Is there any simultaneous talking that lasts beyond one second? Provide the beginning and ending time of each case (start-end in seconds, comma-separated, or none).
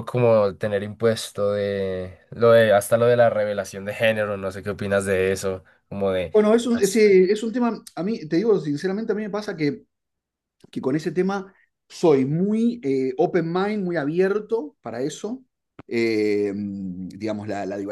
none